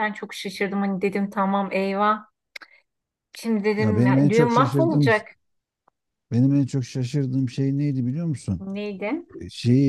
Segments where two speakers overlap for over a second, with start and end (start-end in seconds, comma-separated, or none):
3.8-5.1